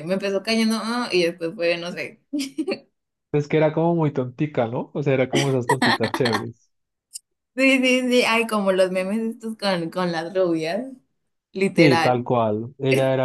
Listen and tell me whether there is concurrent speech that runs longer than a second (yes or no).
no